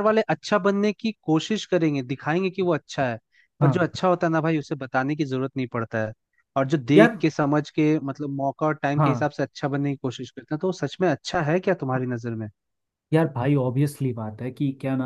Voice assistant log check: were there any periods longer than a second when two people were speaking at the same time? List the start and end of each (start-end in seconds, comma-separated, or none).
none